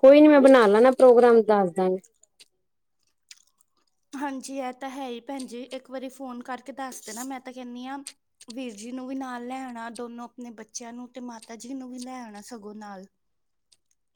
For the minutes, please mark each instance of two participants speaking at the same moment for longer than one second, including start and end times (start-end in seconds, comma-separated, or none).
none